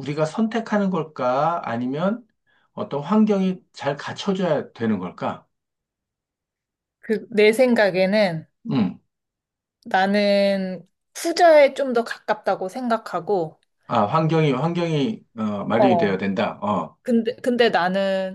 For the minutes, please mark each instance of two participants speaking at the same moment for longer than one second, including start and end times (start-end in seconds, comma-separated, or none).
none